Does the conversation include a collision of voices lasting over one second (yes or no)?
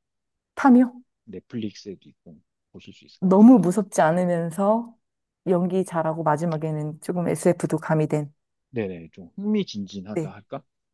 no